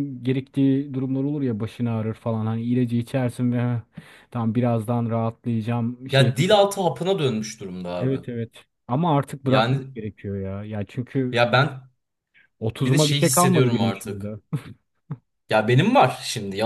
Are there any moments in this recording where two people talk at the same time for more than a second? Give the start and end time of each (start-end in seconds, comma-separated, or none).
12.8-14.3